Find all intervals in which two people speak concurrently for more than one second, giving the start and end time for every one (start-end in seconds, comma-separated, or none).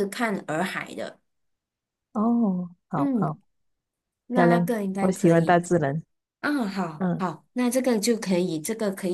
4.3-5.6